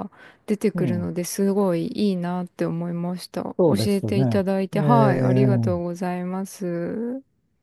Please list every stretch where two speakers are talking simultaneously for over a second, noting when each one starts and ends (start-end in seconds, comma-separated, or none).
3.6-5.5